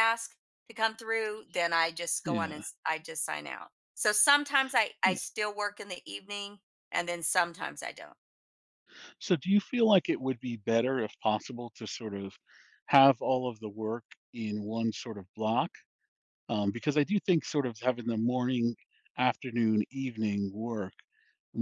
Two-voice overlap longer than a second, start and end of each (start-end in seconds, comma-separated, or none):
none